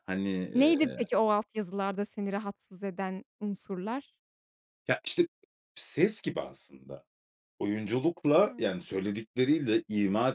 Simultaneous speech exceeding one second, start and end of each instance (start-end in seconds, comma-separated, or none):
none